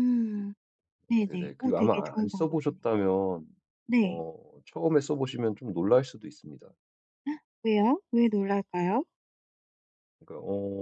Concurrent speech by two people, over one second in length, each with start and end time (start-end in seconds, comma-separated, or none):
1.2-2.8